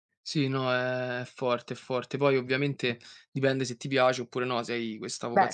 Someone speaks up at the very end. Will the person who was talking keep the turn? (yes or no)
yes